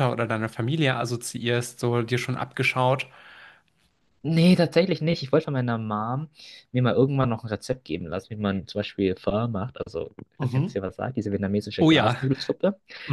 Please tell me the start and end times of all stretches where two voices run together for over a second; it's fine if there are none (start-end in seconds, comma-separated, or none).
none